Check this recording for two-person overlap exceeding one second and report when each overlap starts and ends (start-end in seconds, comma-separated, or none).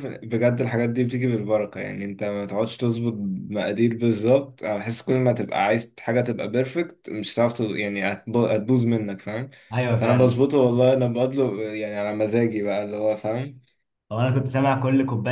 none